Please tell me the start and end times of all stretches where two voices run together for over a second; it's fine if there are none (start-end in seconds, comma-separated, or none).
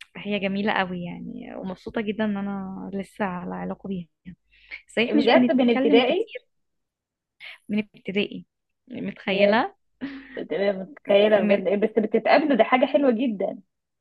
5.1-6.3